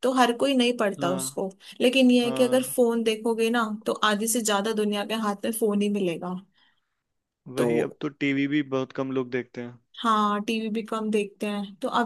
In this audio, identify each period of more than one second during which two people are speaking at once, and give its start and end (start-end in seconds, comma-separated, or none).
none